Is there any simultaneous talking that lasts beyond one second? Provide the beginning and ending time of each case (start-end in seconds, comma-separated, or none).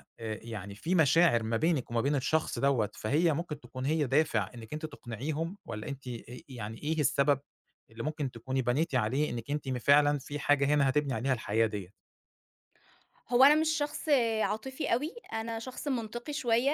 none